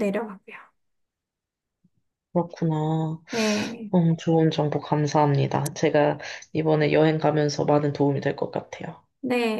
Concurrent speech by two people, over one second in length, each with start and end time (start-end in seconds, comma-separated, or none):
none